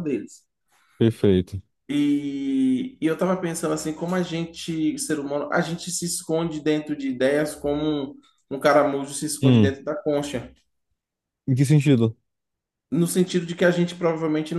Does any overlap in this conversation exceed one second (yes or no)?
no